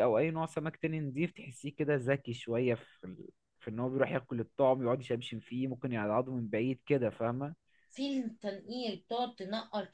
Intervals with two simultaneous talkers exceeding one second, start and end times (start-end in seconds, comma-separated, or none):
none